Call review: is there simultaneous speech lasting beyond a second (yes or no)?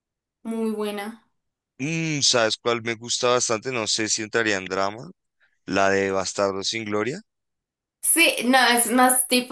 no